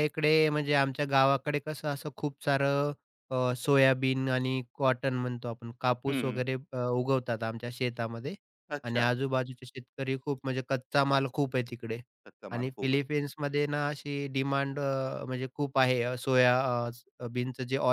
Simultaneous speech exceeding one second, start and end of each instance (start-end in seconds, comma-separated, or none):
none